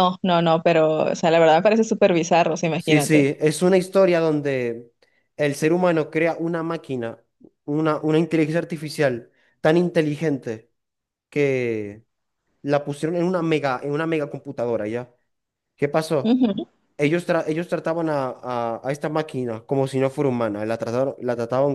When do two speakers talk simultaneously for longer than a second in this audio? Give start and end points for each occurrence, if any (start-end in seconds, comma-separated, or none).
none